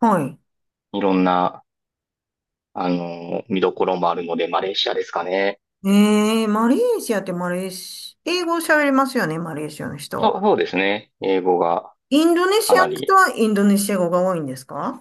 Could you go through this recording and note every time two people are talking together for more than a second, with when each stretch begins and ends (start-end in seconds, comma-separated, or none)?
none